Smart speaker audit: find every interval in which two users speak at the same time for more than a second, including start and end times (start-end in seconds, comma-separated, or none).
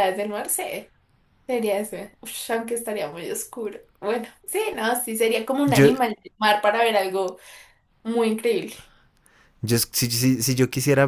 none